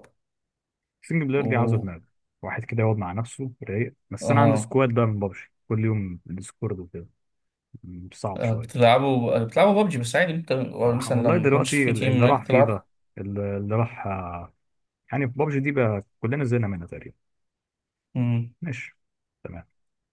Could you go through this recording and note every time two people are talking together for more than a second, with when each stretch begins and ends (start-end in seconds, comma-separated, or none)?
11.0-12.8